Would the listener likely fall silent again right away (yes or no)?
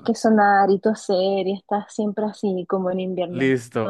no